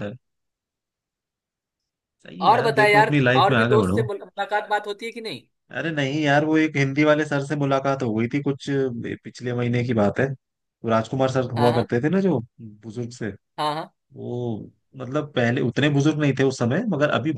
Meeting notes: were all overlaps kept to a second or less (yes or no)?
no